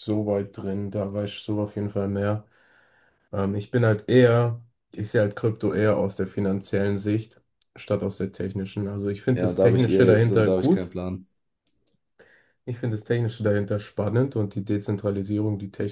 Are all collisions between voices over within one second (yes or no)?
no